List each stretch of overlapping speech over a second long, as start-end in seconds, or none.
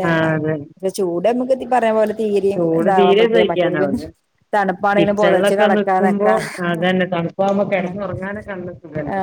5.0-6.3